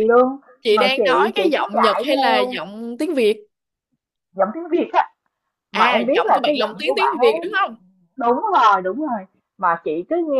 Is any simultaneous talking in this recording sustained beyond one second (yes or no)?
yes